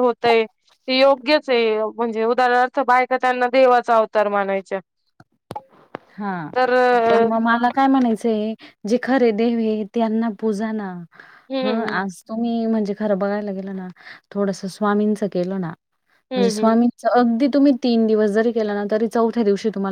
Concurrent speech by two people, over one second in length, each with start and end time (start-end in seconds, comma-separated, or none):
none